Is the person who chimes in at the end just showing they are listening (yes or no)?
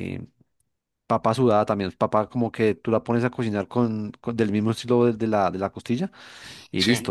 yes